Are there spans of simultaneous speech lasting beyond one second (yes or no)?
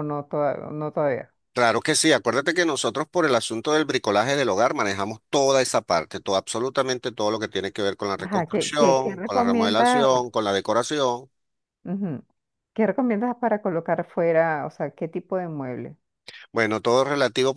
yes